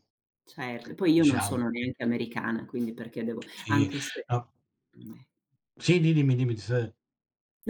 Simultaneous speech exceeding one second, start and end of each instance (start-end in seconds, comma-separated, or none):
none